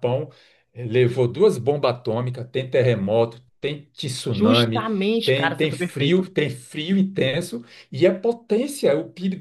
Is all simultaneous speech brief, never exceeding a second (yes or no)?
no